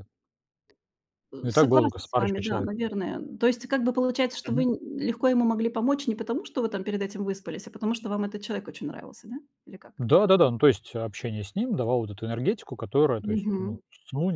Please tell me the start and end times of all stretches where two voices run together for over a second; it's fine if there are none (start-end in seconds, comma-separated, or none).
1.4-2.7